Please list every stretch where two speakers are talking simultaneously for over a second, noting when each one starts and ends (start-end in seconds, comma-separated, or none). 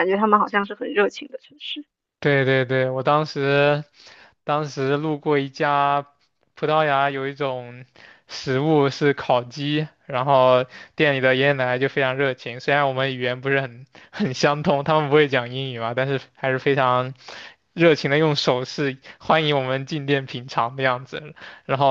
none